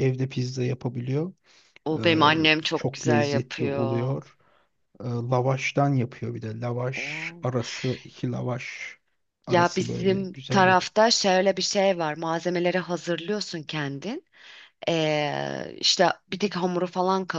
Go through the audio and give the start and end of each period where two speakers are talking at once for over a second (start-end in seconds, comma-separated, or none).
2.7-4.2, 9.5-10.9